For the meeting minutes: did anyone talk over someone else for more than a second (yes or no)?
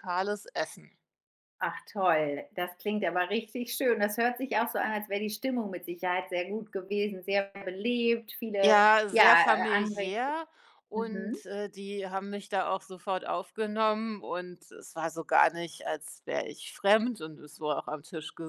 yes